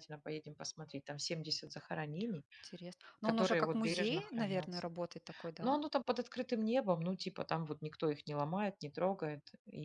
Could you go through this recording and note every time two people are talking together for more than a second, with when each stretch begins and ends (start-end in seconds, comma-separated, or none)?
3.2-4.9